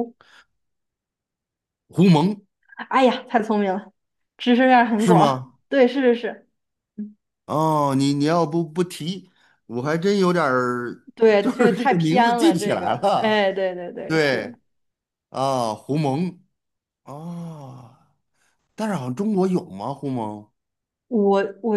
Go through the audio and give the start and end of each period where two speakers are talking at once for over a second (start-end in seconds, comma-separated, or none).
11.1-13.4